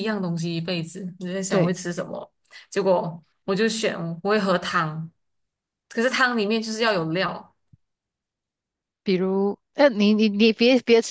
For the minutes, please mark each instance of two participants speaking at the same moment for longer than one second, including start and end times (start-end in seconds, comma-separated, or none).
none